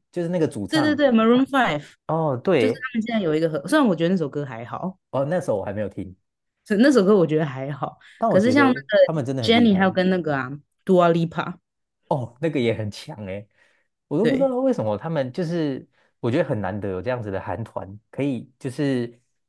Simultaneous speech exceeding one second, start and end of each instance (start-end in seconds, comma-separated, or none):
8.2-9.8